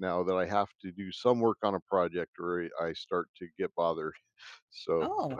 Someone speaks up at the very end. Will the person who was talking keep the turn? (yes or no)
yes